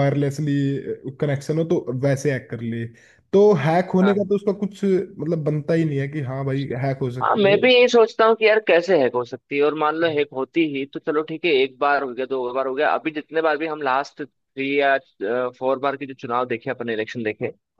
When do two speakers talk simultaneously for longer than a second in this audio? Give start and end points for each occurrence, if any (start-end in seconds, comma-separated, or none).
none